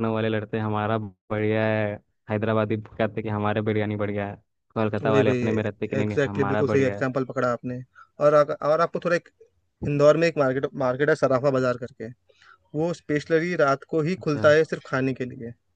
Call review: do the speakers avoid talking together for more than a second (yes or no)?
no